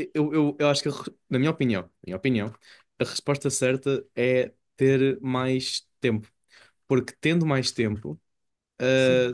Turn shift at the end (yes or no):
no